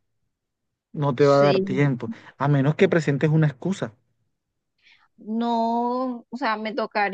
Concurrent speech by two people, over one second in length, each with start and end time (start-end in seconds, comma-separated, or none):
none